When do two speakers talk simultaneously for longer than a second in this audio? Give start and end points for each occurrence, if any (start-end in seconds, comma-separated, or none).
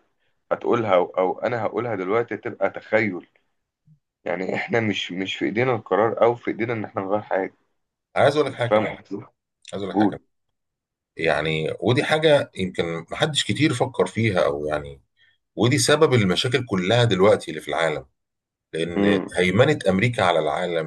none